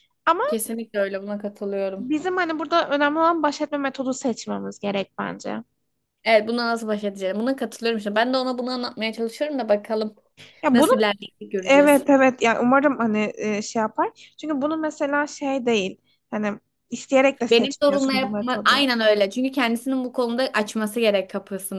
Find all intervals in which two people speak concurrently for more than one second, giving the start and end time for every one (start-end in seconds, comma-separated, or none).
17.5-18.9